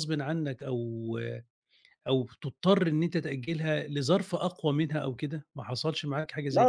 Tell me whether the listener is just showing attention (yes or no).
no